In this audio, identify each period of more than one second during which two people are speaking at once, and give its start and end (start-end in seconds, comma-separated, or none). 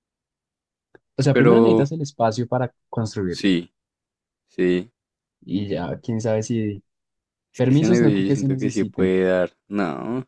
7.5-9.1